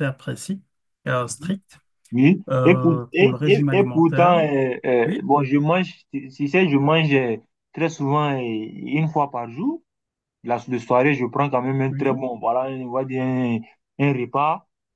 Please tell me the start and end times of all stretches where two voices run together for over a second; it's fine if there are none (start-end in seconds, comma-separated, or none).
2.5-4.3